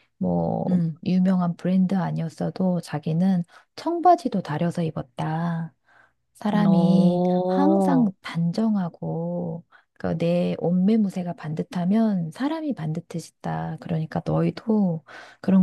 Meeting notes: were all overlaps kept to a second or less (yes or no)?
no